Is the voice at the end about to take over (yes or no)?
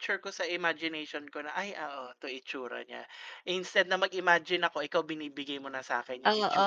yes